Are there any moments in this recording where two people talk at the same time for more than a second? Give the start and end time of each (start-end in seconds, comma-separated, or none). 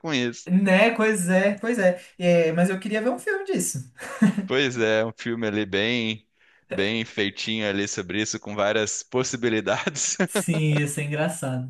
none